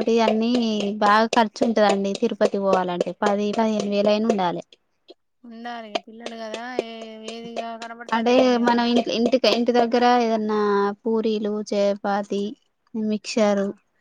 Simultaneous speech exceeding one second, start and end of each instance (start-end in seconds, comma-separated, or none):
none